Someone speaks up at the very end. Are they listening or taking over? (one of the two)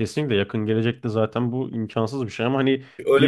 taking over